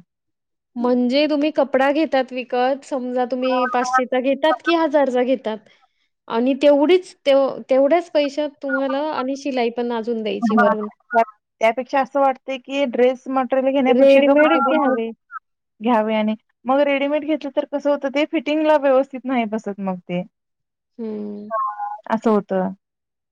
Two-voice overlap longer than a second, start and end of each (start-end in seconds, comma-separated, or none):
none